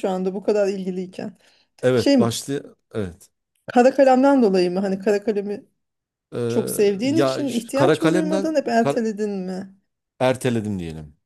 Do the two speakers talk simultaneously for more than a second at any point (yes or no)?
yes